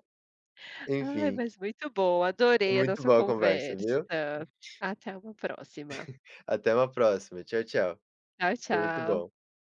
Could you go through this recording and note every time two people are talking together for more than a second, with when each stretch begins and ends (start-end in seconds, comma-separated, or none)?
2.7-4.0